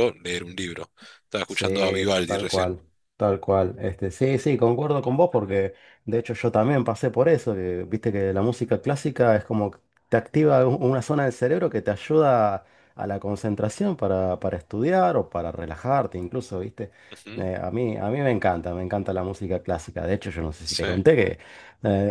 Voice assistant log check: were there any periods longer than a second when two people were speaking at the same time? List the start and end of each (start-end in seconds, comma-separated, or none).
1.4-2.8